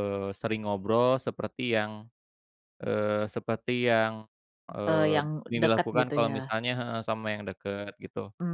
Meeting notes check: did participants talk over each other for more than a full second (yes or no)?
yes